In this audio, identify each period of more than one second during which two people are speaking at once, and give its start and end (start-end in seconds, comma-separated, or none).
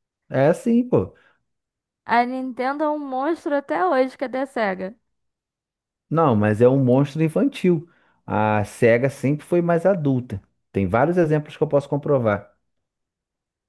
none